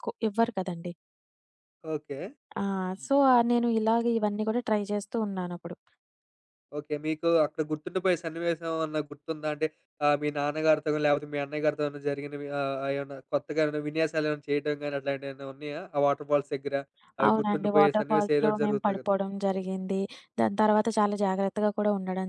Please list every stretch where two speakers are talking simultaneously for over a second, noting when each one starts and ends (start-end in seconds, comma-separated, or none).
17.3-19.1